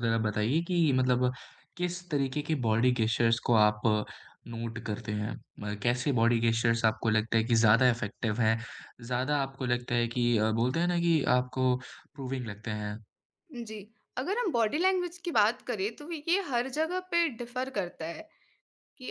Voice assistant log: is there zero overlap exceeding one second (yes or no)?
yes